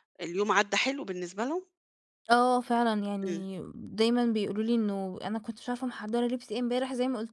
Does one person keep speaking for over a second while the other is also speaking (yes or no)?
no